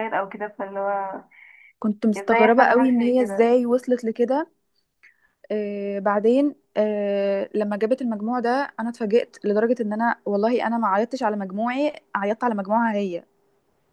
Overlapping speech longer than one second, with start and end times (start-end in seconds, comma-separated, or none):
2.2-3.5